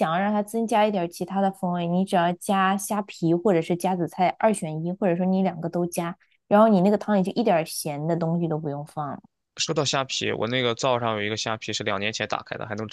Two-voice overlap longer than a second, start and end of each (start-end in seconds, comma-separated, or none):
none